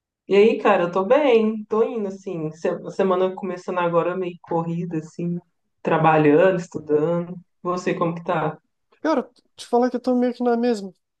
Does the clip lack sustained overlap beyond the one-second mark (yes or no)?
yes